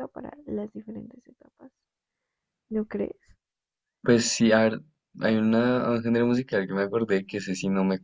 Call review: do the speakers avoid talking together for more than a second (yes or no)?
yes